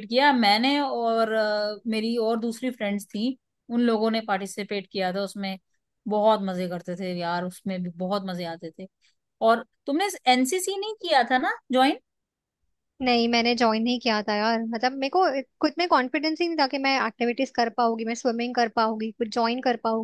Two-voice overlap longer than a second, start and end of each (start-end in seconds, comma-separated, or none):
none